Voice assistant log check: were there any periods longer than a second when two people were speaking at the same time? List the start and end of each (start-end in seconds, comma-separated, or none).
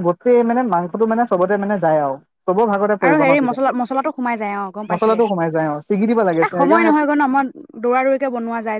4.9-6.9